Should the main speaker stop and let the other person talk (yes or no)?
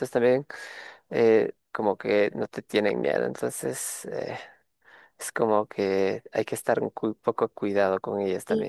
no